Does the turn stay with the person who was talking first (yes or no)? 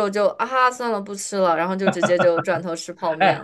no